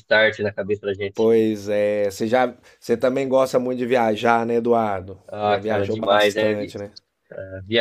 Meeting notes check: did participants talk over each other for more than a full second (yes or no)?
yes